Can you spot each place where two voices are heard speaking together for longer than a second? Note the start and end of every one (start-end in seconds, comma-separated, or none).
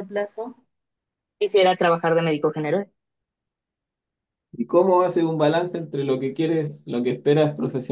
none